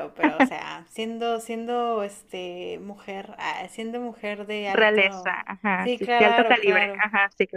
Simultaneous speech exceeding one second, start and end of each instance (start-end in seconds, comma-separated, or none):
4.7-7.0